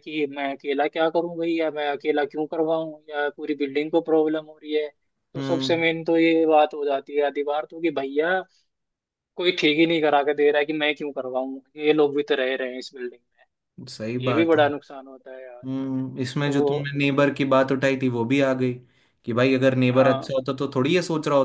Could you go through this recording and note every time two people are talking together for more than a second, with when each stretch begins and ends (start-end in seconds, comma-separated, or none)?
none